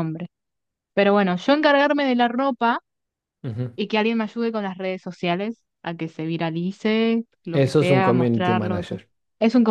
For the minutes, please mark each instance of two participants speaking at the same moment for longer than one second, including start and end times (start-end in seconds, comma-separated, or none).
7.5-9.0